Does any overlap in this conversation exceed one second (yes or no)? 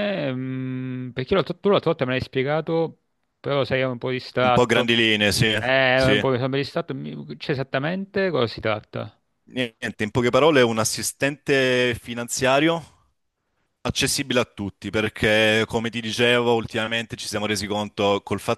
no